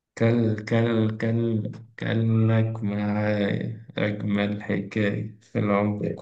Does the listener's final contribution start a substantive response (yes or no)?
yes